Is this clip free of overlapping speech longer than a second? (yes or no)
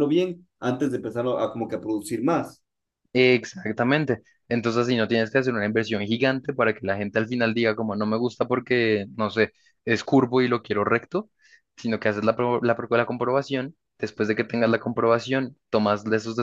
yes